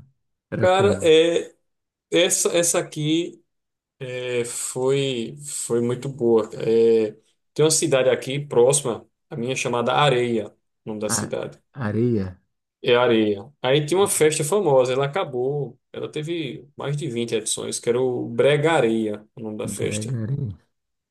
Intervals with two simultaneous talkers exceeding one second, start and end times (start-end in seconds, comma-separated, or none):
none